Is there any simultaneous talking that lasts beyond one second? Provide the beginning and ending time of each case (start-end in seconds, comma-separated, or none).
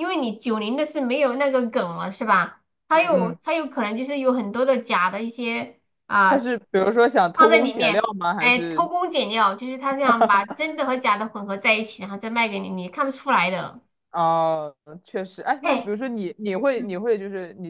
7.3-8.9